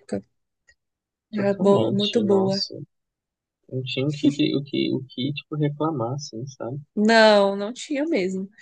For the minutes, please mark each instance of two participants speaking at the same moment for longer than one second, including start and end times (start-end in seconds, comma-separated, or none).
1.3-2.6